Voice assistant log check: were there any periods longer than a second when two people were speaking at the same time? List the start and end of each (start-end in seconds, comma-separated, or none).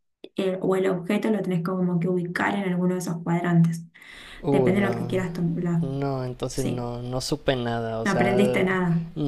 none